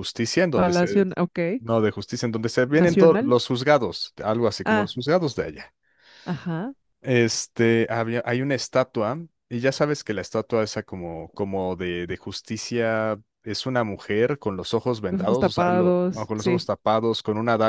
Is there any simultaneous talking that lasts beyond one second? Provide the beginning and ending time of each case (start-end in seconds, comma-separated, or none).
15.1-16.7